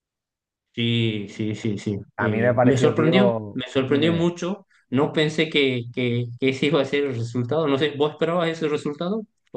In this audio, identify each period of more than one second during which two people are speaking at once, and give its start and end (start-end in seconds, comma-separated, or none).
2.2-4.2